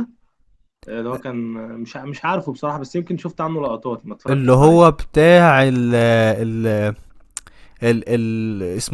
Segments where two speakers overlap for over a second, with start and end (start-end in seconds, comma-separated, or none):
none